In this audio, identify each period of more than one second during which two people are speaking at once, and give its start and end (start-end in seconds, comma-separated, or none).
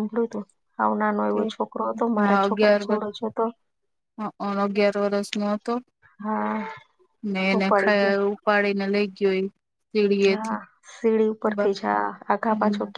none